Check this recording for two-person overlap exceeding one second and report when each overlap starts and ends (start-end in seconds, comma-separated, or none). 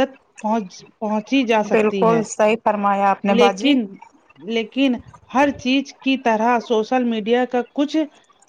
none